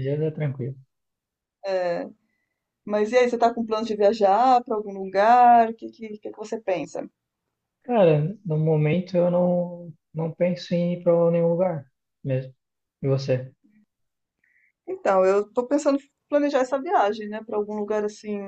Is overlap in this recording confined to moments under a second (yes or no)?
yes